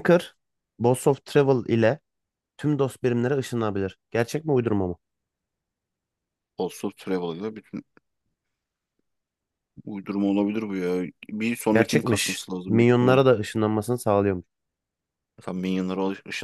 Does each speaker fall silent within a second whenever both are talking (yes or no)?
no